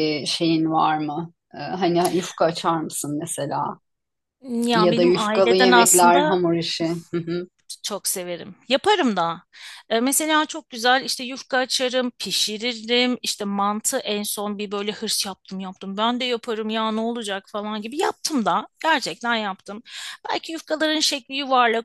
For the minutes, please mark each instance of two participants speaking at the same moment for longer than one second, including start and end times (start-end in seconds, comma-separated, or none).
4.7-6.4